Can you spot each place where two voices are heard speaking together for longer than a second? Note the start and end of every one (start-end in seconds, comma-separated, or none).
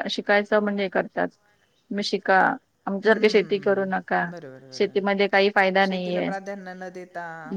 3.0-4.2